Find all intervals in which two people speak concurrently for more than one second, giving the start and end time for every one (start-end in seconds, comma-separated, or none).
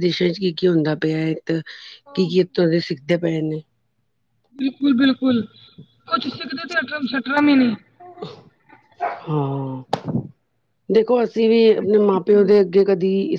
none